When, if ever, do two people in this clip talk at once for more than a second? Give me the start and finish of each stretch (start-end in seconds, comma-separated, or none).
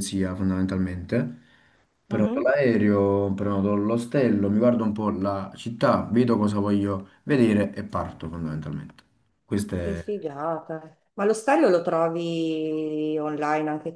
none